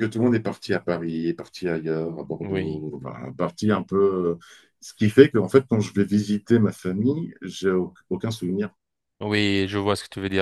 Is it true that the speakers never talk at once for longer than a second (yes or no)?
yes